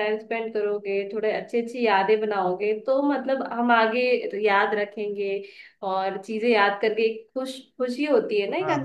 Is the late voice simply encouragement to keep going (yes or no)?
no